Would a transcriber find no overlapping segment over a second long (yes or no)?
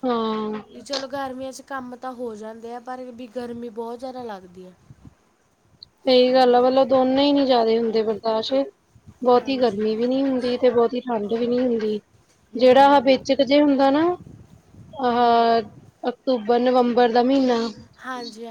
yes